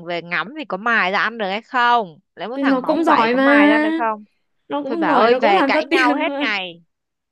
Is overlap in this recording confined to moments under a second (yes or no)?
no